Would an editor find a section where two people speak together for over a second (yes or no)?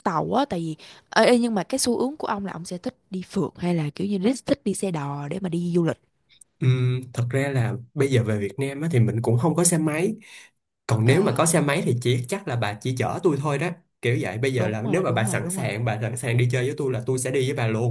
yes